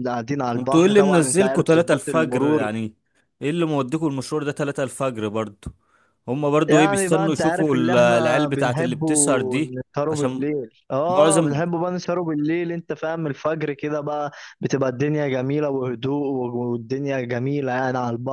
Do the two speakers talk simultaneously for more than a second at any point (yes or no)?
yes